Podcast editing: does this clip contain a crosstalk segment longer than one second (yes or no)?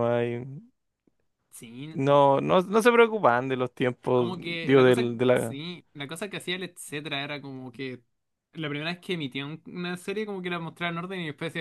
yes